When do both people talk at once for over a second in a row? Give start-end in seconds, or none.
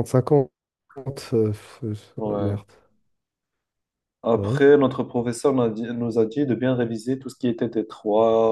none